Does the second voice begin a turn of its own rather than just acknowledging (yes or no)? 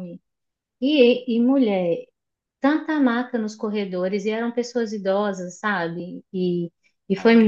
no